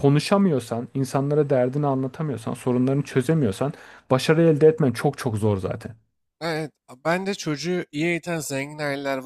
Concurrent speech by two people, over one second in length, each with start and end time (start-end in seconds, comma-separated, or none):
none